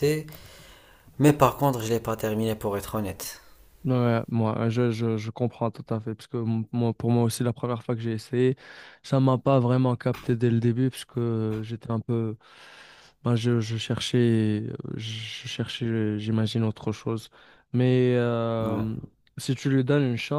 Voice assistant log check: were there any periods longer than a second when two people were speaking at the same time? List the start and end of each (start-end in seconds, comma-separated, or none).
none